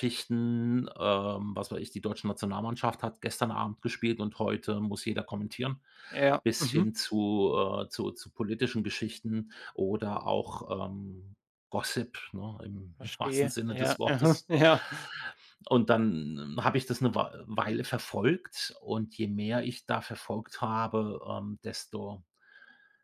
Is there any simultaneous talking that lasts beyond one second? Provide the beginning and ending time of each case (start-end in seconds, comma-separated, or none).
13.0-14.5